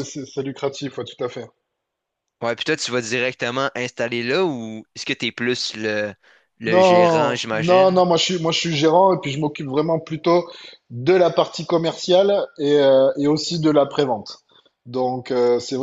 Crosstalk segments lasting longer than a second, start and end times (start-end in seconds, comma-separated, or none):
6.7-8.0